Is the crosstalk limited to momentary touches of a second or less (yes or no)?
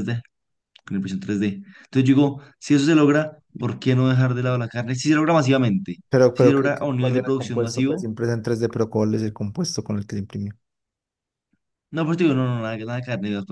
no